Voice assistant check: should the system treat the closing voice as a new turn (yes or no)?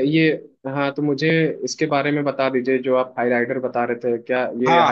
yes